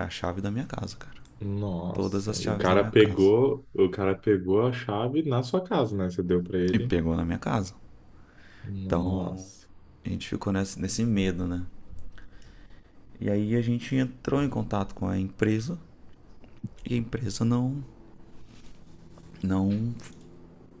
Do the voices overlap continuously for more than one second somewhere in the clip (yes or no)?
yes